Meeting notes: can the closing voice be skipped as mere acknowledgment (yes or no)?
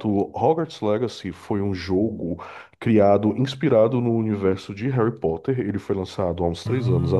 yes